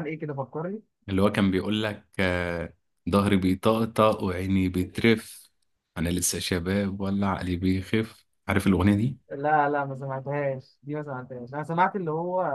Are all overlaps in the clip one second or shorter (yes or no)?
yes